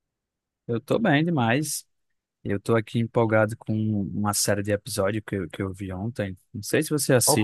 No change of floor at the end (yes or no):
yes